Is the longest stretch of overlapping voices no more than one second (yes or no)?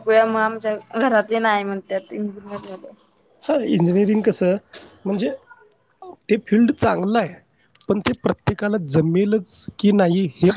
yes